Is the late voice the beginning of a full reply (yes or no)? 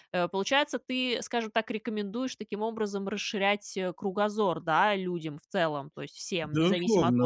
yes